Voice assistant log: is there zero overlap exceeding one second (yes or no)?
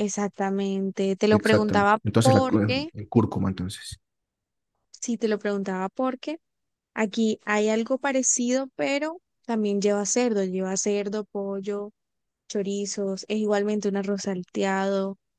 no